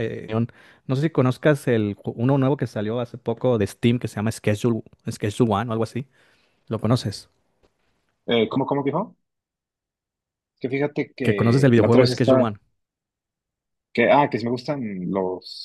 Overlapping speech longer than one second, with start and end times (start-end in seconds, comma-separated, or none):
11.2-12.5